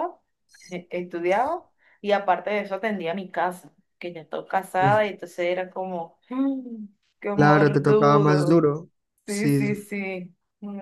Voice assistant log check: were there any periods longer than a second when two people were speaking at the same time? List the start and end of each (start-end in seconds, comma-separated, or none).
7.3-8.6